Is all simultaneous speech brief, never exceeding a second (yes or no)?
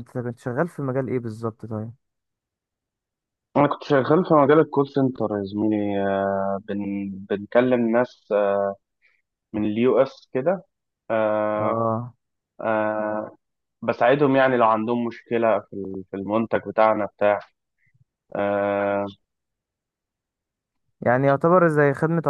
yes